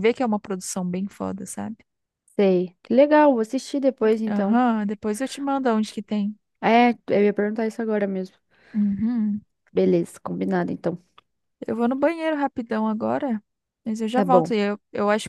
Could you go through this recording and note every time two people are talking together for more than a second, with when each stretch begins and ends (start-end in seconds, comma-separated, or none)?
none